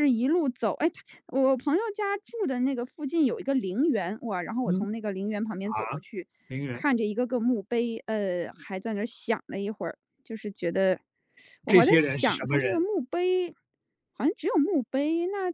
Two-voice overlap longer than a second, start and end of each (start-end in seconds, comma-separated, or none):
11.7-12.9